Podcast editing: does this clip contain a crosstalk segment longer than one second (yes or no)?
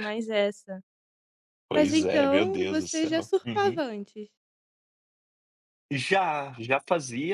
yes